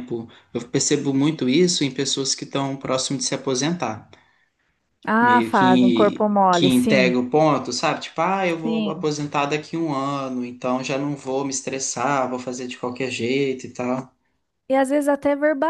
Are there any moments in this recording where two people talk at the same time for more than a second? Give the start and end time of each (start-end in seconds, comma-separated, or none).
5.2-7.2